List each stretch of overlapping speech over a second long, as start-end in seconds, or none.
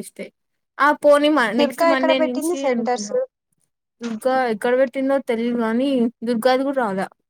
1.6-3.1